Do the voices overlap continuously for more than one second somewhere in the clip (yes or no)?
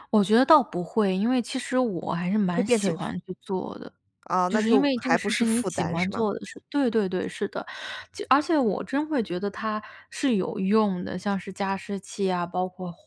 yes